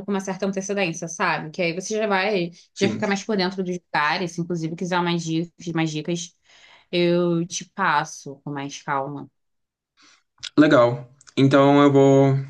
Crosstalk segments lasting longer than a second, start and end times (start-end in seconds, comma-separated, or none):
none